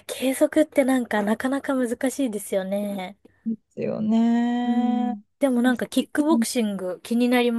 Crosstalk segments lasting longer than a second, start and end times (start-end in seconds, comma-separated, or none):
none